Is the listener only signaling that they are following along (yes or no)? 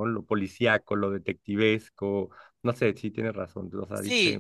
no